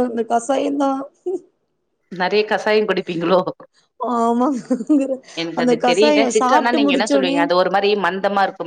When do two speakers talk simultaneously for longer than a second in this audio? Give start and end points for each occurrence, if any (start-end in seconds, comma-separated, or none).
5.6-7.4